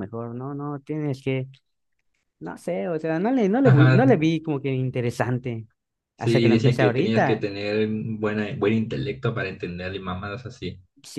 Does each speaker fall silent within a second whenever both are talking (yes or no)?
no